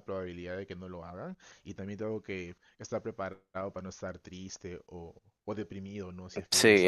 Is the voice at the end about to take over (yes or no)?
yes